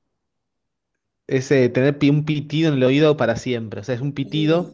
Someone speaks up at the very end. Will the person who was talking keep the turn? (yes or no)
yes